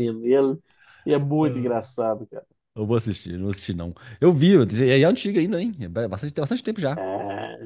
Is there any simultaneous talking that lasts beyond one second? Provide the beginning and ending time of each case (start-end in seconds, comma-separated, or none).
none